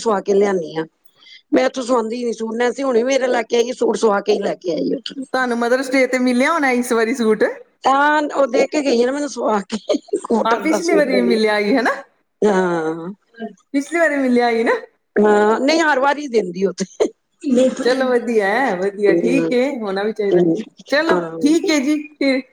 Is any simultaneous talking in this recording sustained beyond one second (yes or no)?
yes